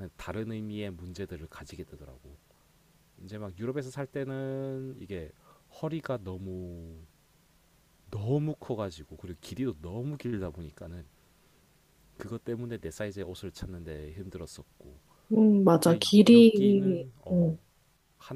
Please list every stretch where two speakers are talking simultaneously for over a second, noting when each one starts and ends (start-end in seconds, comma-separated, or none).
15.8-17.6